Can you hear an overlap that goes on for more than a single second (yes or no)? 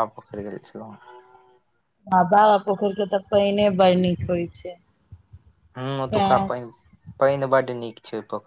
no